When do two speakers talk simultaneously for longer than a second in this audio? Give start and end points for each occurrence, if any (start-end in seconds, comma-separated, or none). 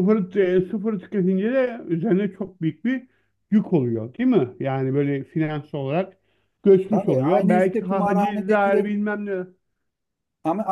6.9-8.8